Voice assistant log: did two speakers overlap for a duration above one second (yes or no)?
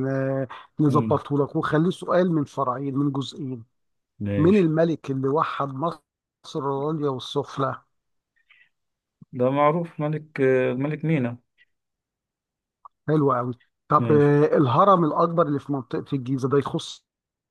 no